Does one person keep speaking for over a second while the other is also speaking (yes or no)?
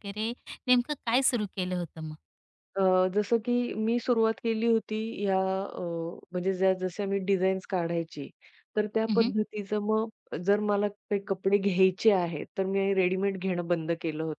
no